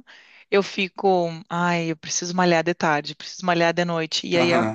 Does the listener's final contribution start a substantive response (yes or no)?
no